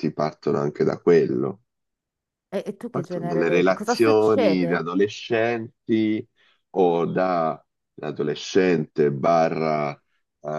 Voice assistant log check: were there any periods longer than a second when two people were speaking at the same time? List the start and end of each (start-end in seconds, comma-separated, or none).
2.9-4.8